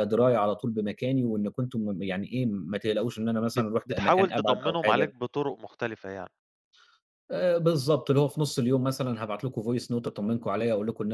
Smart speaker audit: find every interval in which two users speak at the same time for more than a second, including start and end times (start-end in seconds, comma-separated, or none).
3.5-5.1